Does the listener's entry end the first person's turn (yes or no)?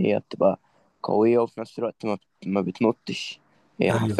no